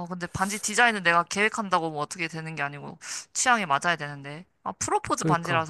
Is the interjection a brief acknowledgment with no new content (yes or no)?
yes